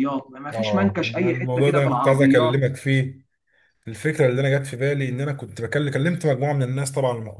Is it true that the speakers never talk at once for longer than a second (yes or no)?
no